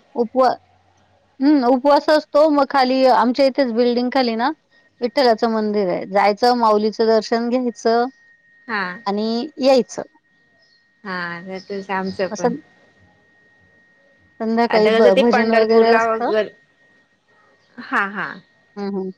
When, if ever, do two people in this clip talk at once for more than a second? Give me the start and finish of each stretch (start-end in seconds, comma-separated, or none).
14.8-16.3